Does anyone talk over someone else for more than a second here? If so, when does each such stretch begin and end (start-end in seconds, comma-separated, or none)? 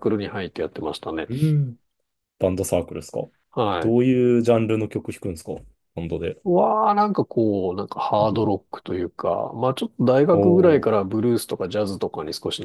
none